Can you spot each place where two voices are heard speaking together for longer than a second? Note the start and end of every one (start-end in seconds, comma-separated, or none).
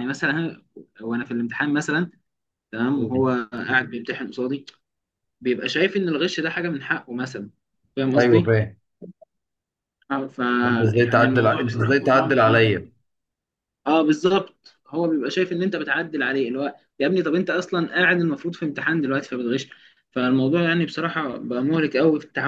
10.9-12.7